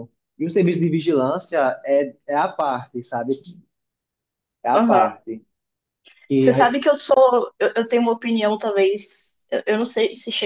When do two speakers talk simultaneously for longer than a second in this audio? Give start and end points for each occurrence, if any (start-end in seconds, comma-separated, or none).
none